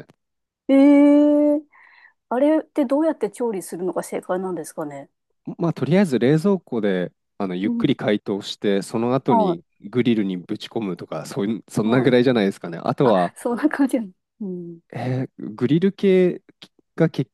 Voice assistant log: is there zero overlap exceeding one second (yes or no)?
yes